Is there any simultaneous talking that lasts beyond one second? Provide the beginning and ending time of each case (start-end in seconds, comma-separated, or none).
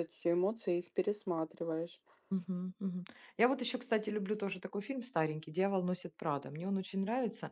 none